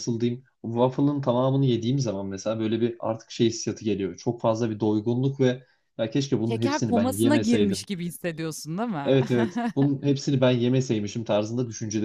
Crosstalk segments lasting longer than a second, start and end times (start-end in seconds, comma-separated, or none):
6.5-7.9